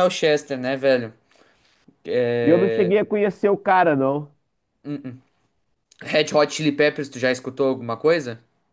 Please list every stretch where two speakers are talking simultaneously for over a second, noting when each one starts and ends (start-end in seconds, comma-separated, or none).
none